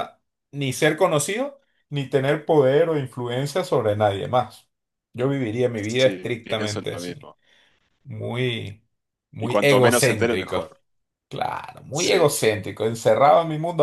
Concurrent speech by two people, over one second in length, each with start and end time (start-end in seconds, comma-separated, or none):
5.8-7.3, 9.4-10.6